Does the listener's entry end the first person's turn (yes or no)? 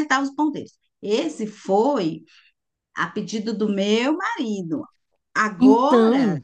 no